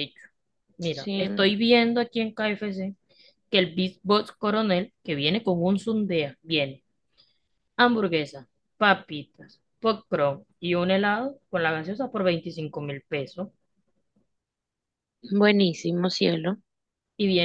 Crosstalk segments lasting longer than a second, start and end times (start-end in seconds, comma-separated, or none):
none